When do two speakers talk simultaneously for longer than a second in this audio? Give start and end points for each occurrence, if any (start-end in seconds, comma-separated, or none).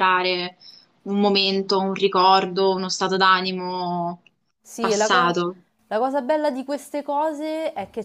none